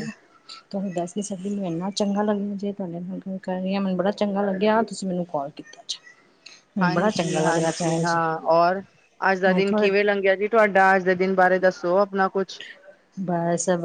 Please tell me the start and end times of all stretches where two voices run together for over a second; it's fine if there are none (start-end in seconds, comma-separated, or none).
none